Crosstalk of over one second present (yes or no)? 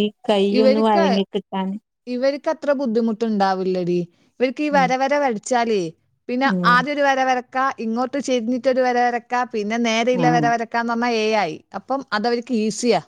no